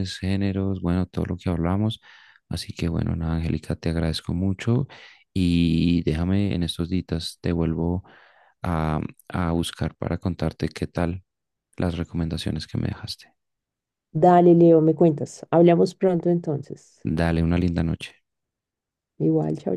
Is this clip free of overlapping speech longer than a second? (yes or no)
yes